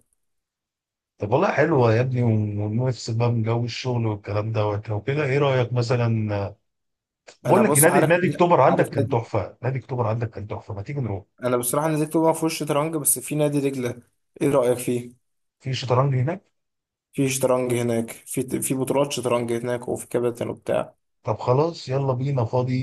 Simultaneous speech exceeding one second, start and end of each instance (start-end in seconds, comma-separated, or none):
7.5-9.2